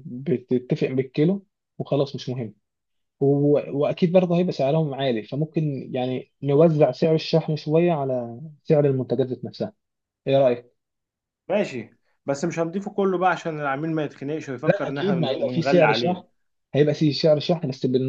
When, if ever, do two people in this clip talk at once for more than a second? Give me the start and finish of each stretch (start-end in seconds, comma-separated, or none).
14.7-16.2